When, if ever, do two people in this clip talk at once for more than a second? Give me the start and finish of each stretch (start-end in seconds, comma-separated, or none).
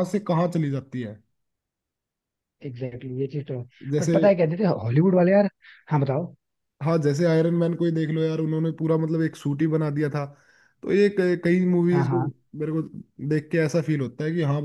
none